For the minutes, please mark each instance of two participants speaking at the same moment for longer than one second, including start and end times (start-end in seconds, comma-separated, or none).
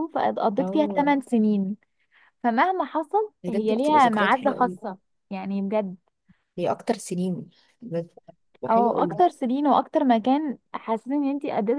3.4-4.8